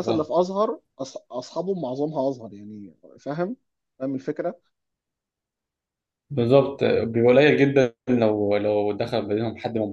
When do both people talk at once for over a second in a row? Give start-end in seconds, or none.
none